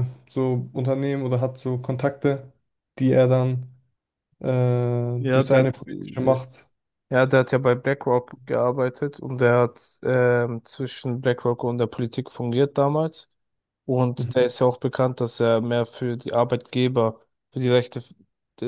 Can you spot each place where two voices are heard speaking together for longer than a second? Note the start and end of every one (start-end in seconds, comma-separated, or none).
5.2-6.4